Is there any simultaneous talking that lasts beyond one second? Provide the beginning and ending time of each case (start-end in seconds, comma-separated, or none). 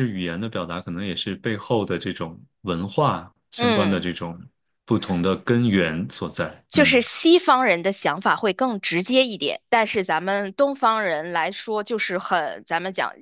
none